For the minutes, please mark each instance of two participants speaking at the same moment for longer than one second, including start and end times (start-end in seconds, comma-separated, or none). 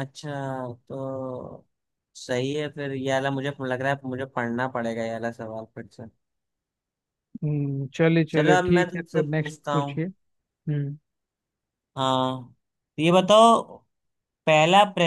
8.3-10.0